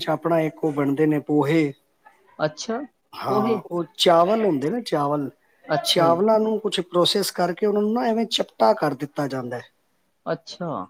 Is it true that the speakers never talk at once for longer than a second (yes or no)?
yes